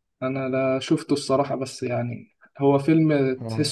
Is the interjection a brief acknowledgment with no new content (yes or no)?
yes